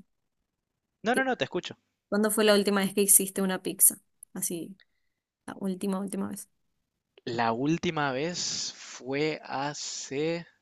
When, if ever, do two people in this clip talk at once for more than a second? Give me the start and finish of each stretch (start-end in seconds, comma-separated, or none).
none